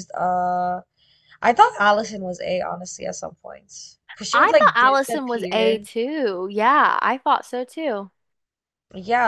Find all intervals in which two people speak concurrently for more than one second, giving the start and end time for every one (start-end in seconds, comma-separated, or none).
4.3-5.8